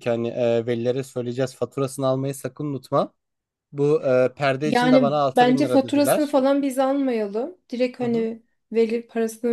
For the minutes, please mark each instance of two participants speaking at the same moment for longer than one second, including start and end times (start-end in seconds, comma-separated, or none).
4.6-6.4